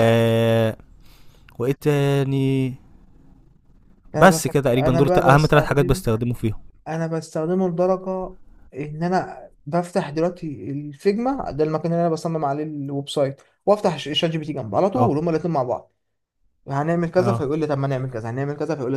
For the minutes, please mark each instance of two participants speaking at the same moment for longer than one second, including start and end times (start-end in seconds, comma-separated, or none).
4.2-6.0